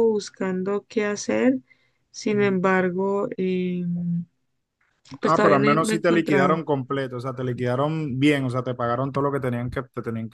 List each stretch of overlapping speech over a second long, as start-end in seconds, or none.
5.2-6.6